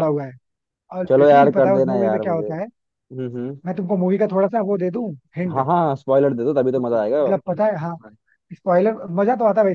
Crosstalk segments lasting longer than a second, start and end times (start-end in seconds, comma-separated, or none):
1.1-2.7